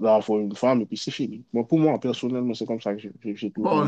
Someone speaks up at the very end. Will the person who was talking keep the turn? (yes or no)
no